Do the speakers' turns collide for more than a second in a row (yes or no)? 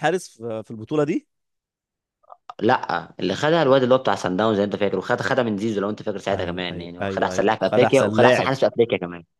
yes